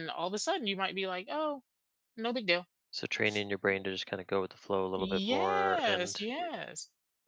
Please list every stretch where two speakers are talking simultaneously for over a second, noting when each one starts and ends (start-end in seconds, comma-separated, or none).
5.0-6.2